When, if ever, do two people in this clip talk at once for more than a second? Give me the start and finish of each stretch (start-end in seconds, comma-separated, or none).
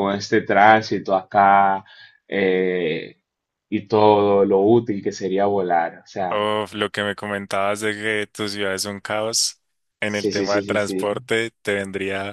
10.0-11.2